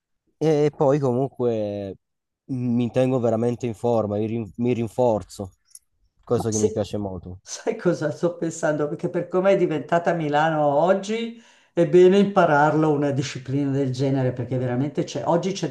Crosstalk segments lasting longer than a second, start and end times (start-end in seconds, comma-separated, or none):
none